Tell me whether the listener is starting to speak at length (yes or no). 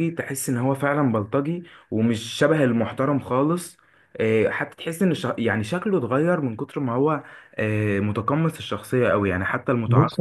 yes